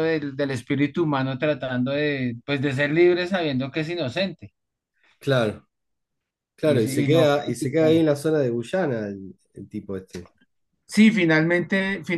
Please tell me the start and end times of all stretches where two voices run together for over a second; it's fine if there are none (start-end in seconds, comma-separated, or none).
6.6-7.9